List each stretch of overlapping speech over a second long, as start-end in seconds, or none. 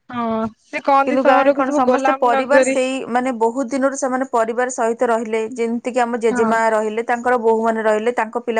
1.1-2.8